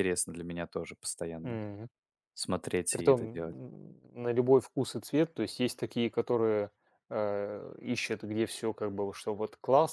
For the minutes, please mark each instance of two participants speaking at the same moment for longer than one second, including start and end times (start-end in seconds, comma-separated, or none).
none